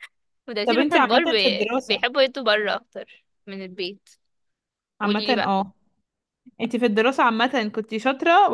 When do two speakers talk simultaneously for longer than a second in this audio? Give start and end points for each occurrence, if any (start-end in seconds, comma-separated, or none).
0.7-2.0